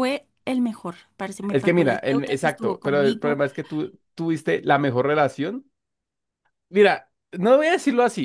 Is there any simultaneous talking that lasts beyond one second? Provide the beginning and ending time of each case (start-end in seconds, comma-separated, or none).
1.5-3.4